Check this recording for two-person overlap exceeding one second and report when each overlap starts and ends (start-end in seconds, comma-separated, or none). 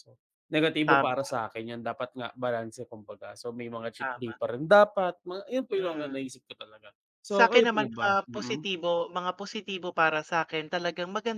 7.3-8.6